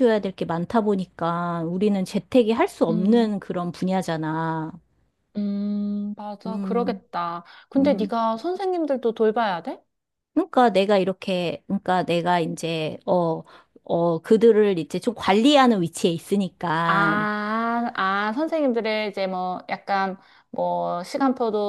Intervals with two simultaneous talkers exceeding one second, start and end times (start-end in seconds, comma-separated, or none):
none